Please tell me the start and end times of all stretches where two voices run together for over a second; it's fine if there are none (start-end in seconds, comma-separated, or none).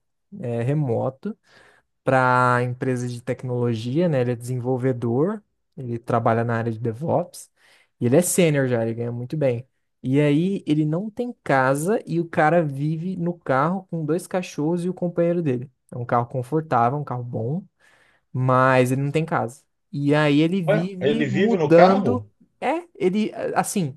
20.7-22.2